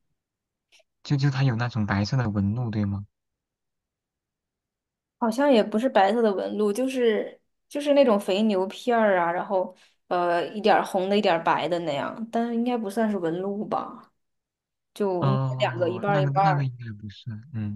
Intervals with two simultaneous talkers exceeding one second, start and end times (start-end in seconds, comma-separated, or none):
15.2-16.7